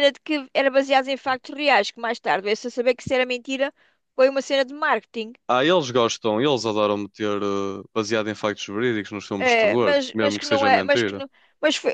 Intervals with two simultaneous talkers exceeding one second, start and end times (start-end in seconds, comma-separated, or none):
9.4-11.2